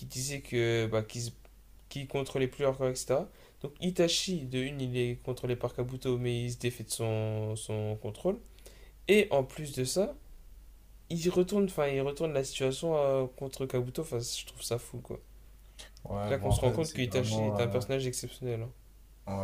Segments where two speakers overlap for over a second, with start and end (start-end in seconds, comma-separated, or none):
16.2-17.8